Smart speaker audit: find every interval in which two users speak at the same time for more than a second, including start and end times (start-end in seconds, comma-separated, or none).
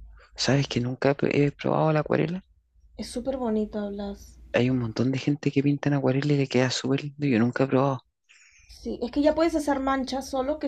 none